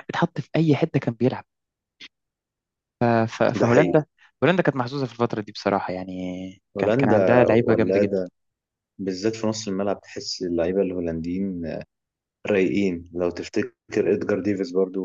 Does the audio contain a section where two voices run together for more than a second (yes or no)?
yes